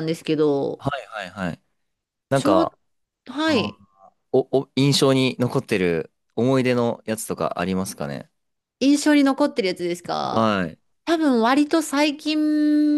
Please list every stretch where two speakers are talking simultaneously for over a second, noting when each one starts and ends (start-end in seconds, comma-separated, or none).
none